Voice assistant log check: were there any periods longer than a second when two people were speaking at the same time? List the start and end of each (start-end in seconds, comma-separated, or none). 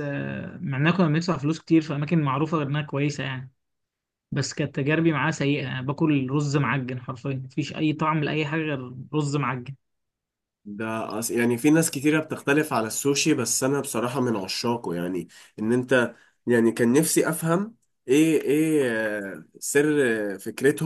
none